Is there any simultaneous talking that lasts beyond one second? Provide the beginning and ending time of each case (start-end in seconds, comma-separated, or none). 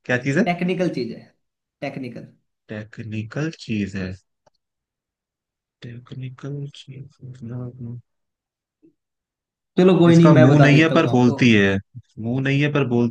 10.1-11.4